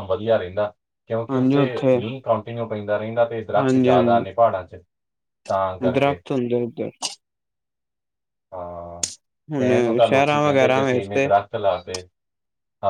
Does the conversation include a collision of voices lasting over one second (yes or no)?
yes